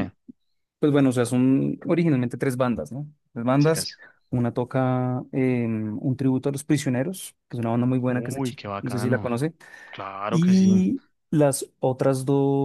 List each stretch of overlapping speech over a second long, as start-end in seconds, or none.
8.1-9.3